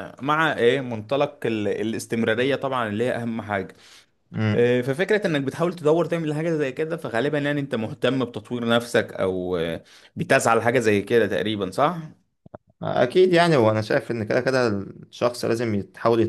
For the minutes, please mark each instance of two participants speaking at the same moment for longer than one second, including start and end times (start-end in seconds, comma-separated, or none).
none